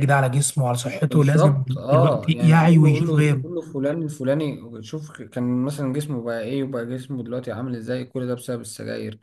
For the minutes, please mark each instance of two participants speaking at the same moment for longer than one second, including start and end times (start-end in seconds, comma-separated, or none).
1.1-3.4